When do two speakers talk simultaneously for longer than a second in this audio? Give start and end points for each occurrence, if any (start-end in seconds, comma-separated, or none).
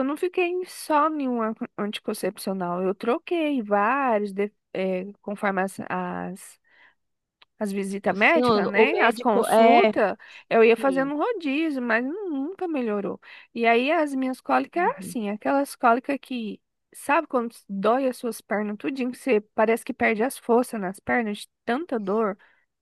8.1-9.9